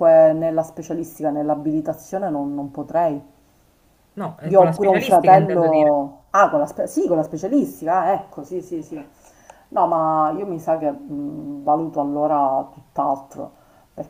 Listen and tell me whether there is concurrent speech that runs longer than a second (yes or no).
yes